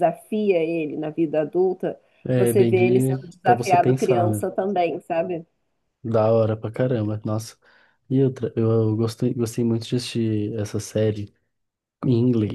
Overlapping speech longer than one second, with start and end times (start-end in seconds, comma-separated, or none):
2.4-4.5